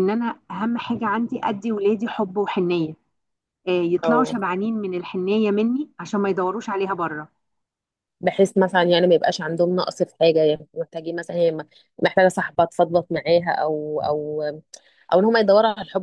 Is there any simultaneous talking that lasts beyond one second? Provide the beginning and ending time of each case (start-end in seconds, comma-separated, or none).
none